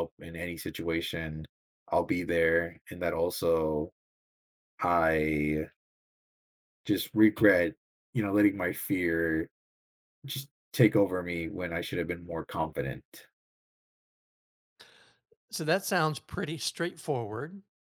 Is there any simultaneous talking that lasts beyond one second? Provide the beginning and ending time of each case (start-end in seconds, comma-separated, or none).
none